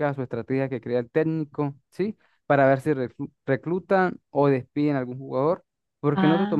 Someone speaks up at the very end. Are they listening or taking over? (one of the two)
listening